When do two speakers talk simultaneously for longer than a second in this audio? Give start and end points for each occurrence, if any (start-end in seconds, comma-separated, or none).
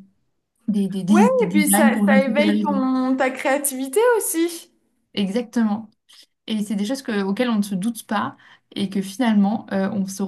1.1-2.8